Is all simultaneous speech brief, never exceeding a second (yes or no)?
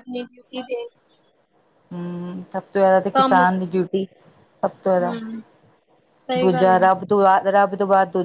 yes